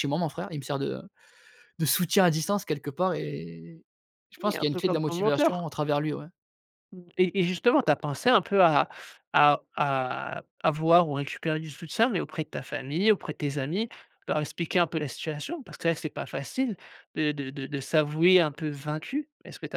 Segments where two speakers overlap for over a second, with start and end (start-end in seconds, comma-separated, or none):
4.4-5.7